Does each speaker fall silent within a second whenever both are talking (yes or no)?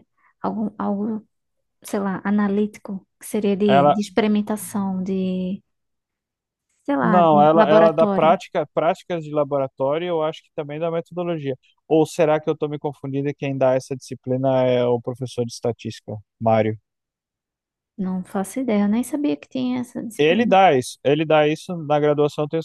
no